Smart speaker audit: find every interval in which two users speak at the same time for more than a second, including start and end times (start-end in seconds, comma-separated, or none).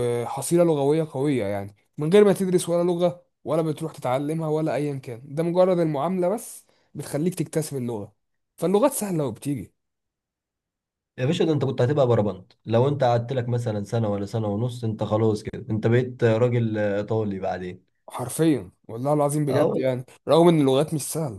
none